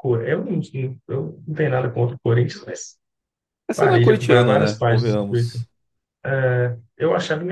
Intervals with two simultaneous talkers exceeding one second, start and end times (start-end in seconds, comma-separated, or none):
3.7-5.6